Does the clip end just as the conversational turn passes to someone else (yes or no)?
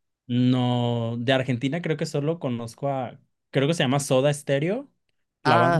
yes